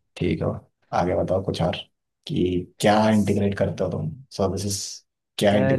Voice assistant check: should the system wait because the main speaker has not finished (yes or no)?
no